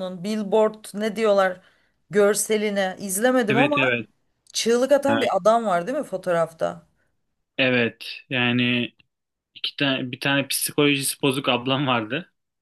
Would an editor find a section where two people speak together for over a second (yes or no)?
no